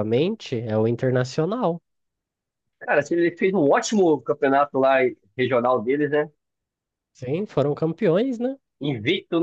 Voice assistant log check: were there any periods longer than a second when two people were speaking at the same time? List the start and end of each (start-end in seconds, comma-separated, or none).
none